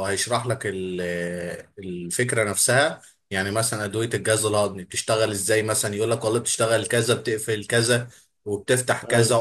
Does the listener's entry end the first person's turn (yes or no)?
no